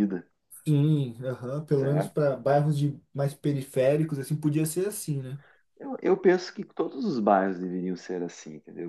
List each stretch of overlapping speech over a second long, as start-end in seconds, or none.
none